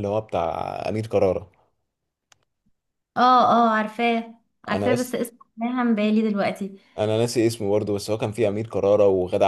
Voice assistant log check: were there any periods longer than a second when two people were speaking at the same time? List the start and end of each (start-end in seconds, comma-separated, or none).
none